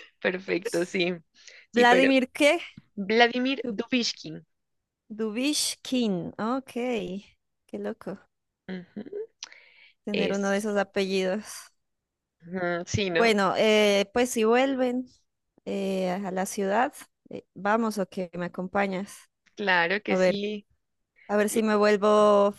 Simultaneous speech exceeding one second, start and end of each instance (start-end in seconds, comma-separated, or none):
none